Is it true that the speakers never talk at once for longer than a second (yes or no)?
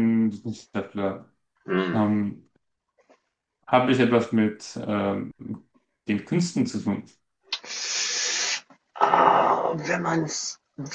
yes